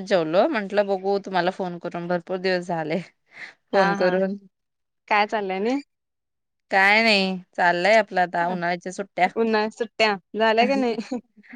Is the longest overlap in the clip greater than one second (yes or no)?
no